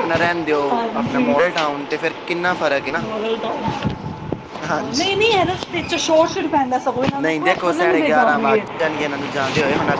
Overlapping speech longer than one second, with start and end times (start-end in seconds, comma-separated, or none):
none